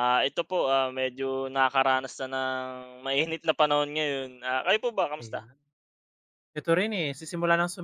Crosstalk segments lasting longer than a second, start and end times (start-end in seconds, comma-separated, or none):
none